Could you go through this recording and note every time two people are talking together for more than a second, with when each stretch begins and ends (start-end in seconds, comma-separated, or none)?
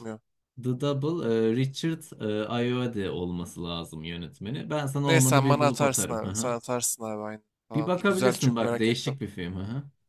5.1-6.6, 7.7-9.1